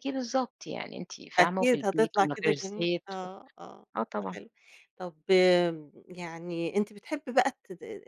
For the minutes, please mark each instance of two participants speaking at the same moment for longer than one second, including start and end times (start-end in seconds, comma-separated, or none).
1.4-3.3